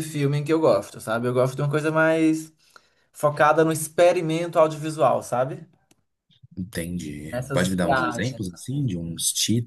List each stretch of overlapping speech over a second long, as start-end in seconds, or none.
7.3-8.9